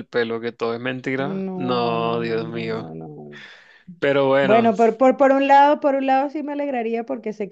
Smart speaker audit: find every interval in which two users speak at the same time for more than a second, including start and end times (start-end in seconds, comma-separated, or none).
1.2-2.9